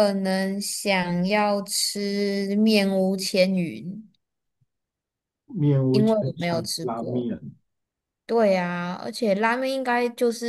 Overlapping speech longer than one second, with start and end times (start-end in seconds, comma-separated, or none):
5.9-7.3